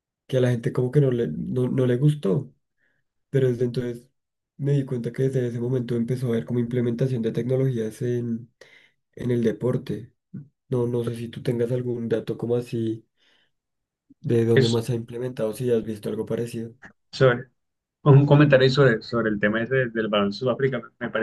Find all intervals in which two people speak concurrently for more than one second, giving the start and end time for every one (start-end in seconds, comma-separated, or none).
none